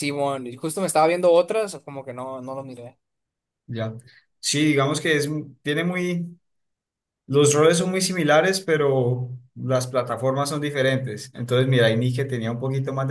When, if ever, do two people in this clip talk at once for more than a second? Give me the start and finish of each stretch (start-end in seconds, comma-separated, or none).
none